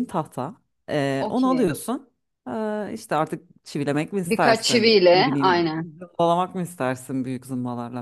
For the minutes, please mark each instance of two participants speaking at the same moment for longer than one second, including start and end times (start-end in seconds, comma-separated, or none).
4.3-5.9